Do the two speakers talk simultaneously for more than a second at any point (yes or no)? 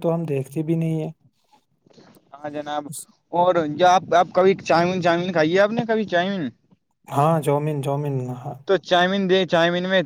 no